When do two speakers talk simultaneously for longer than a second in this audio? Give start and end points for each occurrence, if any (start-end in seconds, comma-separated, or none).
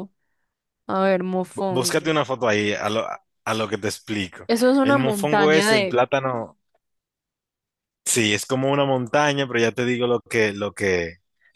4.5-6.0